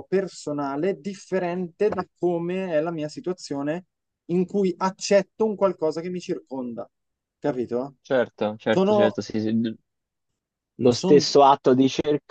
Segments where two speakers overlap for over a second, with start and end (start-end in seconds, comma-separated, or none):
none